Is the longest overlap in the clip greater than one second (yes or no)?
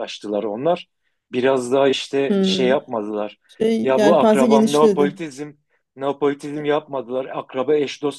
yes